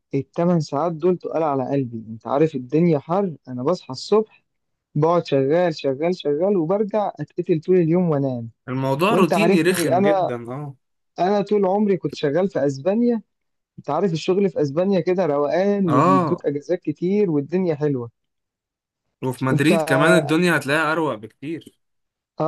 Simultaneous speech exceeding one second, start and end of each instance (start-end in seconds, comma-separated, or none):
9.1-10.3